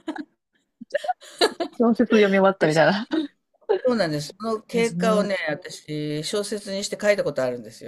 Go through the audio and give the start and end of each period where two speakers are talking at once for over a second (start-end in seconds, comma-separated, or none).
none